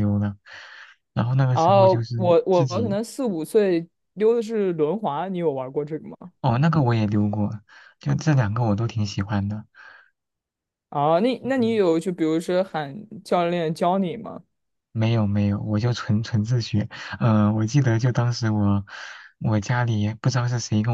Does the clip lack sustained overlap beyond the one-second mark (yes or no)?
no